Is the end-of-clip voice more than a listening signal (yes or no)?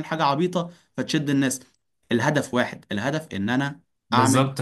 yes